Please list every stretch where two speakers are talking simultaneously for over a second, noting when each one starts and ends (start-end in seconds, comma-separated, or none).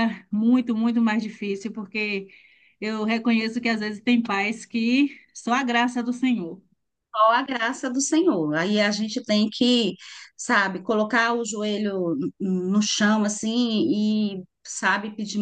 none